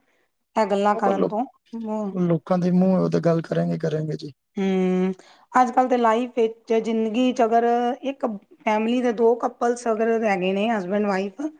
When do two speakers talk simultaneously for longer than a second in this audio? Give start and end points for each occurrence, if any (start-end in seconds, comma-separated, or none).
none